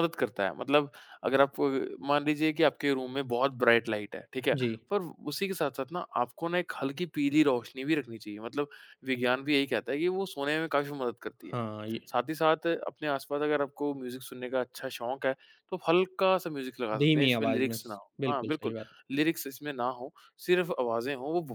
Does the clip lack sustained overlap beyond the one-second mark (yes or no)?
no